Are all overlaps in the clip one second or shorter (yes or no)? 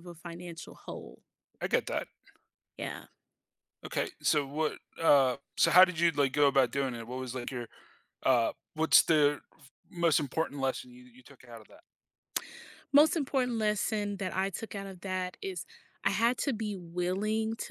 yes